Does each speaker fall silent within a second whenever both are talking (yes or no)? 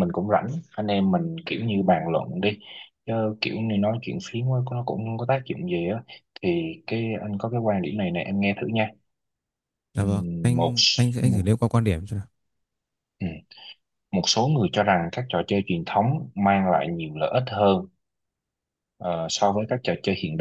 no